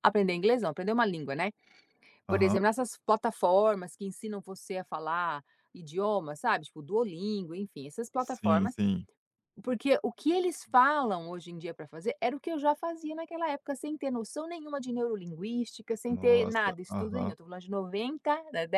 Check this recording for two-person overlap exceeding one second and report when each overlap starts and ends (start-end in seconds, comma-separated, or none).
16.1-17.3